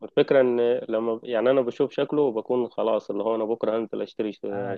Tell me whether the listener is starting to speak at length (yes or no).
no